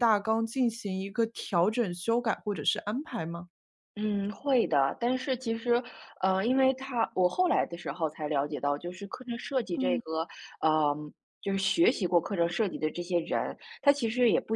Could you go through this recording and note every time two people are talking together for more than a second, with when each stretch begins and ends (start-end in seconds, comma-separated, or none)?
none